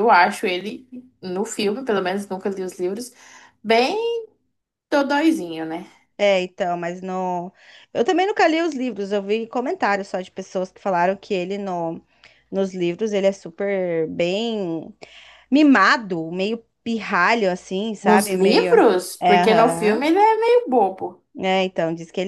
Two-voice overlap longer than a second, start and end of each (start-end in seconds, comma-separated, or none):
18.1-20.1